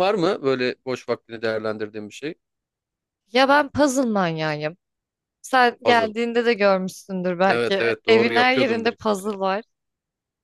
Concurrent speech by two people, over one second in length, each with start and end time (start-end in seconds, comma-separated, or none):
7.5-9.3